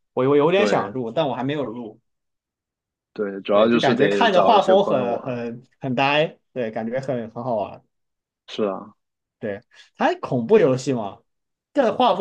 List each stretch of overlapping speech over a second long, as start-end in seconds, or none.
3.5-5.4